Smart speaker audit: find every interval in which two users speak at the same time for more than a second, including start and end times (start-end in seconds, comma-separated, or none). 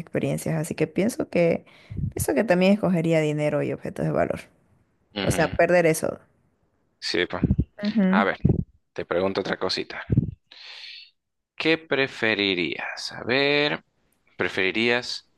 none